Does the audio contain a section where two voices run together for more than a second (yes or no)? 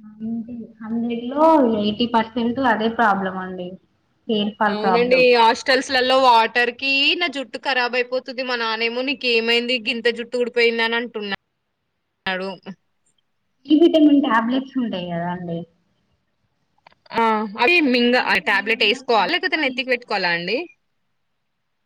yes